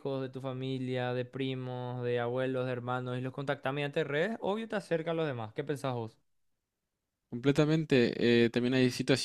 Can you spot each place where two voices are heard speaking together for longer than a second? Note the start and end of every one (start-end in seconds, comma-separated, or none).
none